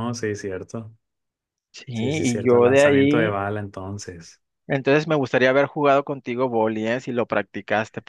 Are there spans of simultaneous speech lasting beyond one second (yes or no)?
yes